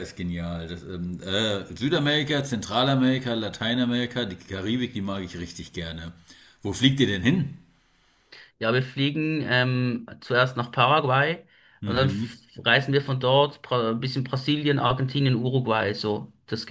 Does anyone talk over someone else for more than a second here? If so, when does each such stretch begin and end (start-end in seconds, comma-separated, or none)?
none